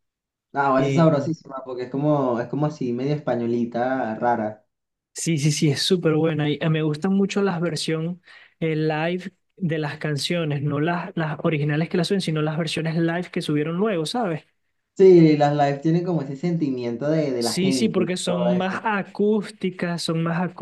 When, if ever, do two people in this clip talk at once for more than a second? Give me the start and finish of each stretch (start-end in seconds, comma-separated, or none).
17.4-18.8